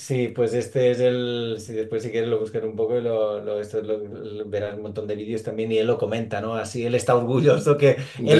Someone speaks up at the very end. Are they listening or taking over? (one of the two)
listening